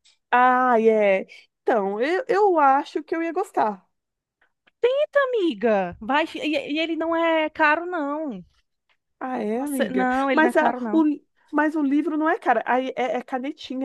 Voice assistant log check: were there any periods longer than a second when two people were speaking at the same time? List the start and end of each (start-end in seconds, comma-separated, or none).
9.5-11.0